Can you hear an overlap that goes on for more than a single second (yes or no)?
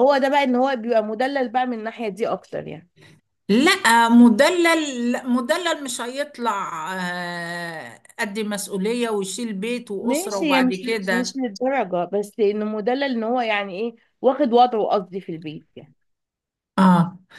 yes